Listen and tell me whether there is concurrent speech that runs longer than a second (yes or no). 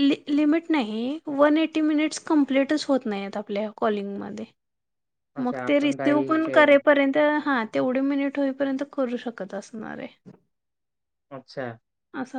yes